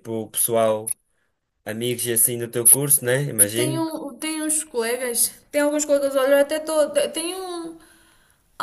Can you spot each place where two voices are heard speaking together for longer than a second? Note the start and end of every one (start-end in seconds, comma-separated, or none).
none